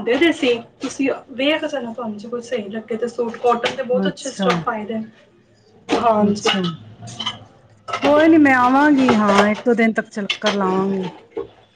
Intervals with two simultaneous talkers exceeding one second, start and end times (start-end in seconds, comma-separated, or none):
none